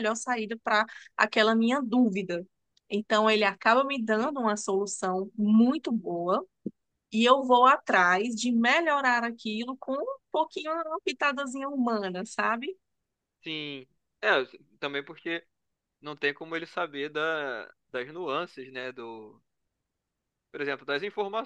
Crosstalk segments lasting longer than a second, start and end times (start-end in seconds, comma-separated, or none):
none